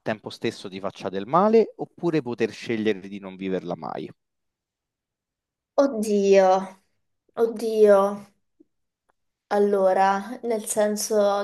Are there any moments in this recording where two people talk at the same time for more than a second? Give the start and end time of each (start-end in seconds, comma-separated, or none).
none